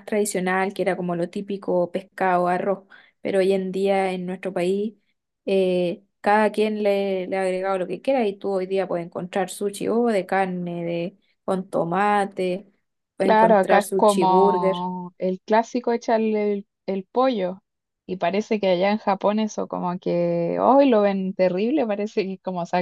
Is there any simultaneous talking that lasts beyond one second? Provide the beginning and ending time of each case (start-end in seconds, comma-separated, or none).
13.2-14.9